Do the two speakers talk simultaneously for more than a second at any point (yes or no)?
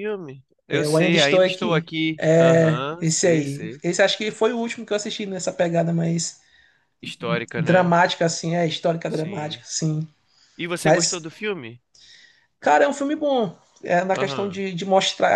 yes